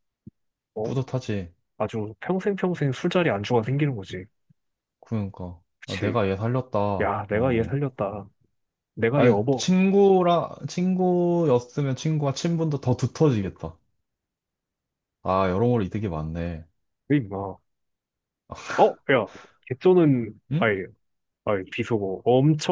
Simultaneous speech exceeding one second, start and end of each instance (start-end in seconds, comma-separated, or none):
none